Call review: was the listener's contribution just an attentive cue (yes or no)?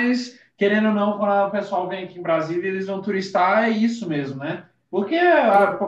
yes